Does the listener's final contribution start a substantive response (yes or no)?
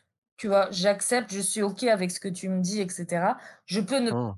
no